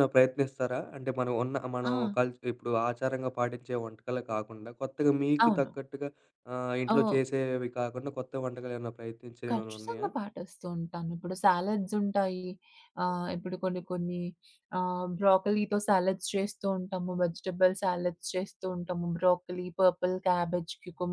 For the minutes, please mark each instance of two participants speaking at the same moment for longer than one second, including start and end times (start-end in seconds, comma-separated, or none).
none